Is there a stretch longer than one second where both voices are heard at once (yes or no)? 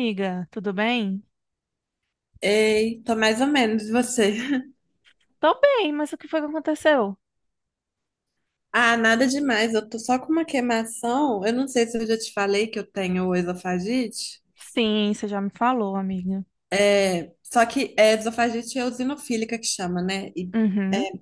no